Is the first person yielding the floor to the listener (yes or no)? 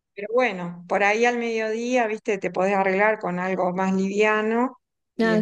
no